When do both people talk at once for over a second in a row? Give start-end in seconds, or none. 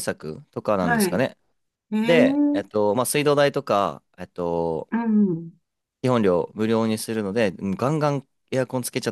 none